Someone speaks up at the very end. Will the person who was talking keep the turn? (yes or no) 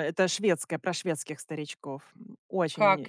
no